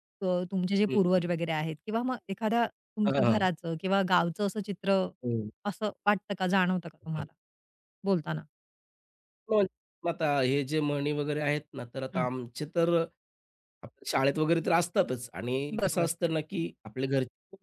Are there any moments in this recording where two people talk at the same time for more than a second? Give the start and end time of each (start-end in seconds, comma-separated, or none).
none